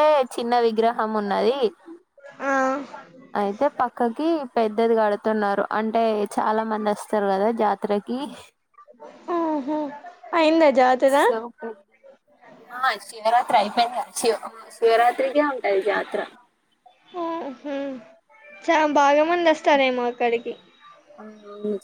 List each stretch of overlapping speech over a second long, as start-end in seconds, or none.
none